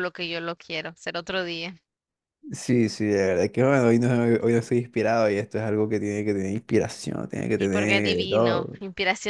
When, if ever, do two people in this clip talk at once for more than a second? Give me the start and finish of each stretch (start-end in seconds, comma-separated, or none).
7.5-8.8